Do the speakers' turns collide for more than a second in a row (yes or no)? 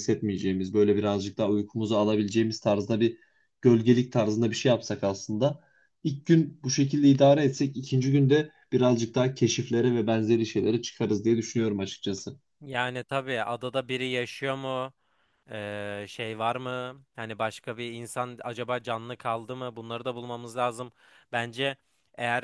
no